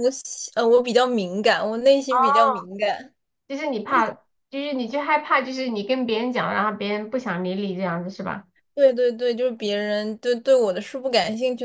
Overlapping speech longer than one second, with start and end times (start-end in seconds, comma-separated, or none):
none